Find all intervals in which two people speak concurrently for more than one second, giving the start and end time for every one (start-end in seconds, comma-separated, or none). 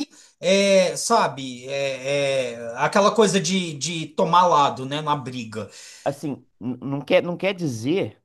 none